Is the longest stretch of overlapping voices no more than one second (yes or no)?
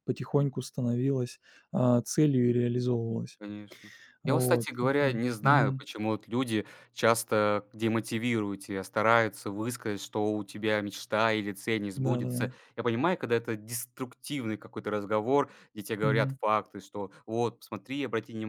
no